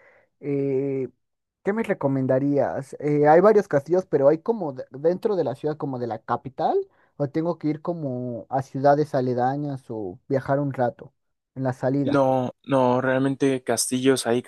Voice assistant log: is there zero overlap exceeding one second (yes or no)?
yes